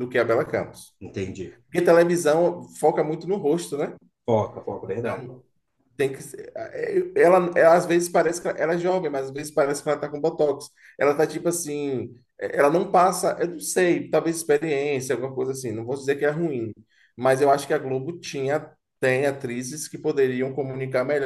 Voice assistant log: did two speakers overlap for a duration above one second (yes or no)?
no